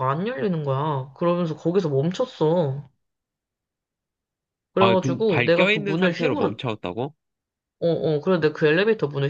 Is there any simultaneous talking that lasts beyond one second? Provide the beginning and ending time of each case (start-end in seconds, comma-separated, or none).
4.8-6.6